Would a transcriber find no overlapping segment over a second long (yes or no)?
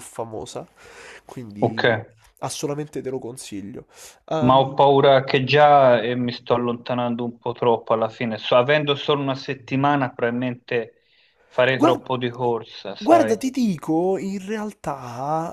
yes